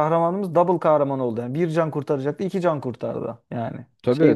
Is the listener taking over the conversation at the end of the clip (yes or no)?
no